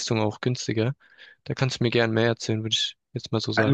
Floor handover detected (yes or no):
yes